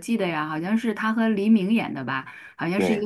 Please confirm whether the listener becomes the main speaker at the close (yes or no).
no